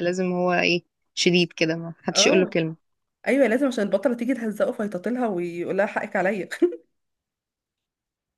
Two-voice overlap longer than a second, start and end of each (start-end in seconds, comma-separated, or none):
none